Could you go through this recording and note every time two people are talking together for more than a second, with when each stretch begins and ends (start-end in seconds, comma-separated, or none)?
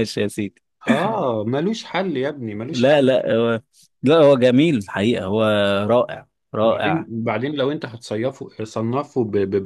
none